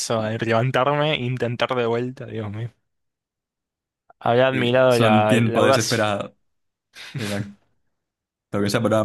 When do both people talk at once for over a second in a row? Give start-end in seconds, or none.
4.5-6.0